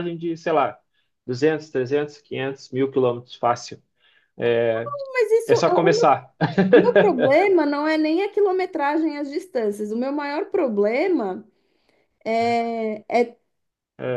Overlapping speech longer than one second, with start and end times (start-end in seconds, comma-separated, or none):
none